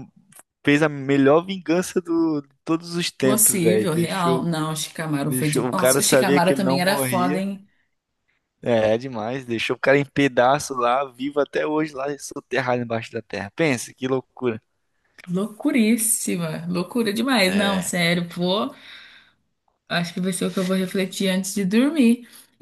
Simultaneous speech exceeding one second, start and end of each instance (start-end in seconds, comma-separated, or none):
3.2-4.5, 5.2-7.4